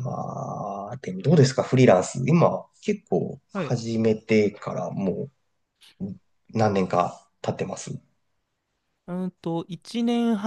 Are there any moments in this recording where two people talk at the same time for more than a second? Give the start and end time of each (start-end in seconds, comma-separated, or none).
none